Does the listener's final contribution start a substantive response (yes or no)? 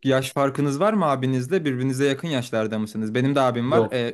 no